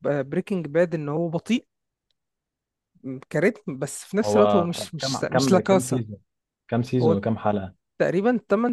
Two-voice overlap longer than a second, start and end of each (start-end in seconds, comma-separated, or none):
4.2-6.0